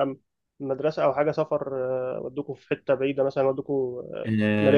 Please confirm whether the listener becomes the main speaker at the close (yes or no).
yes